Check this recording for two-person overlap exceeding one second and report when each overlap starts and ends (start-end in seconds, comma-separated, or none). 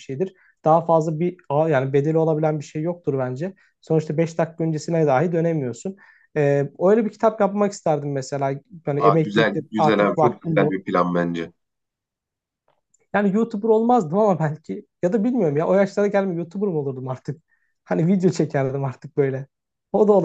9.0-10.8